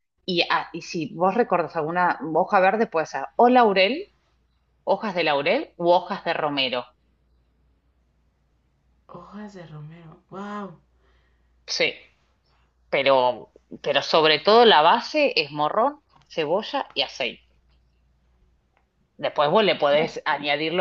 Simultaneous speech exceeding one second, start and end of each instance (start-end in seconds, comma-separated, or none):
none